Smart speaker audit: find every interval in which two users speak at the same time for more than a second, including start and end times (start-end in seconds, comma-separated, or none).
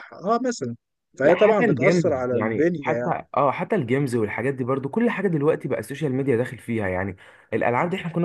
1.2-3.2